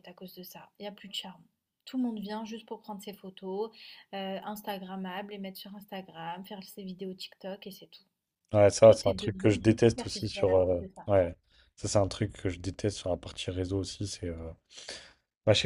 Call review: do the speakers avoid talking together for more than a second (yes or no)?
no